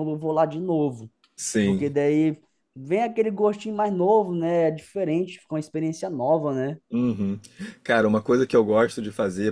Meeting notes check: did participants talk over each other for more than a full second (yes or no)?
no